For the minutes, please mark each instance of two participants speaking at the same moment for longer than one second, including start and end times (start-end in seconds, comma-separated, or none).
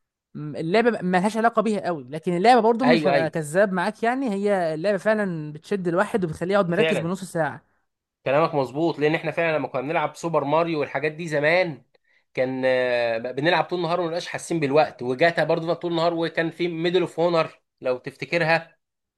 none